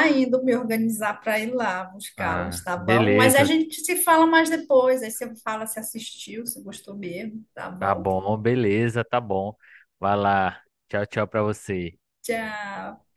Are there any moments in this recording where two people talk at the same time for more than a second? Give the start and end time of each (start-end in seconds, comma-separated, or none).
2.2-3.5